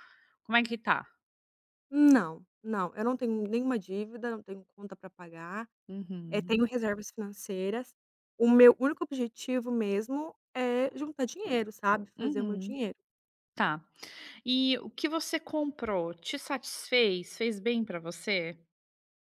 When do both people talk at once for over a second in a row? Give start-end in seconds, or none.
none